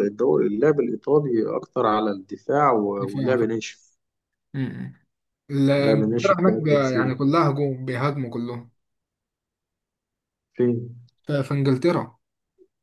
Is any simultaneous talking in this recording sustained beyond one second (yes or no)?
yes